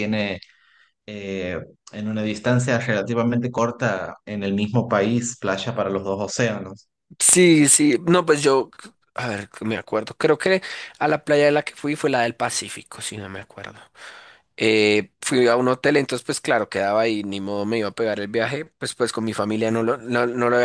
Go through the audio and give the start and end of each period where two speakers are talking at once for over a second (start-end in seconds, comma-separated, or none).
none